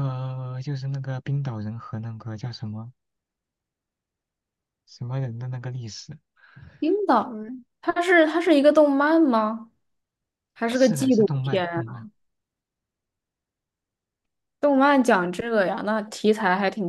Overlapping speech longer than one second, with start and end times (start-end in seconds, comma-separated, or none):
10.7-12.1